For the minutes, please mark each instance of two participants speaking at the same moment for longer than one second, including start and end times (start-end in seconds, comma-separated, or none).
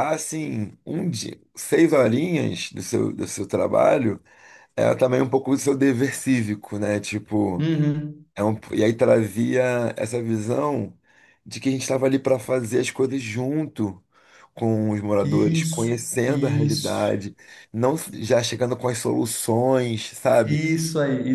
15.2-17.1